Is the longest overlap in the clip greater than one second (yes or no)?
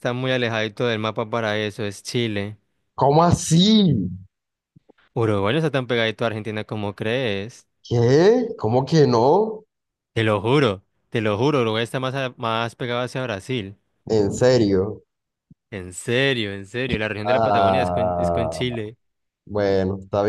yes